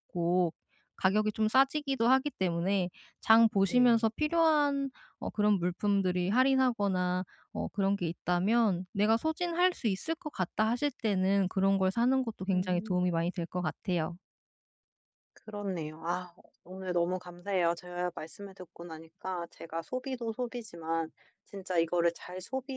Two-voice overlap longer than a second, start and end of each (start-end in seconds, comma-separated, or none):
none